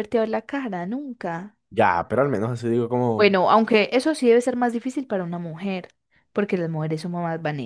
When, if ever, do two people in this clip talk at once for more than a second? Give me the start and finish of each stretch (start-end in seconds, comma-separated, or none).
none